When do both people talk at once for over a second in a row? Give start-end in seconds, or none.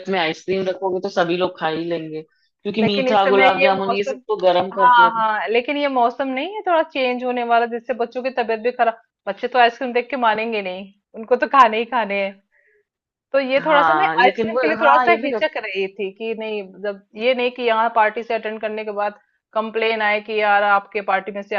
2.8-4.2, 13.6-15.5